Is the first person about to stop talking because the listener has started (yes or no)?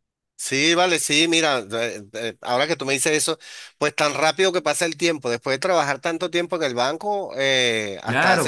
yes